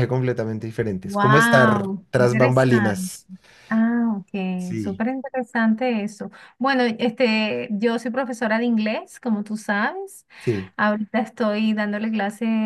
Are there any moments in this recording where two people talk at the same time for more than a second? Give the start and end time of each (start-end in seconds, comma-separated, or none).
1.0-3.1